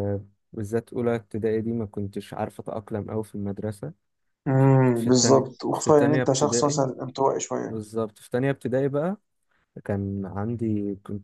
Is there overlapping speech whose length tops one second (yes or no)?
yes